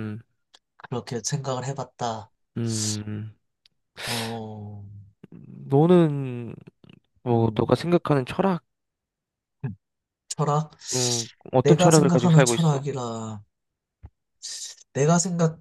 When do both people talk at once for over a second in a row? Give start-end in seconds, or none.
11.6-12.9